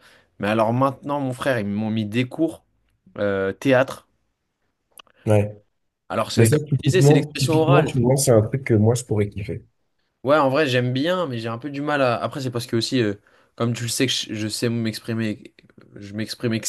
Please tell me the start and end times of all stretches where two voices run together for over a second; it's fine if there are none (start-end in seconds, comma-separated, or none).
6.4-7.9